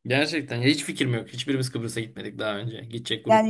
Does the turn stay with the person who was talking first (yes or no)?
no